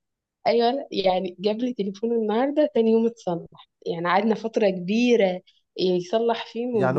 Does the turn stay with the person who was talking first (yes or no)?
no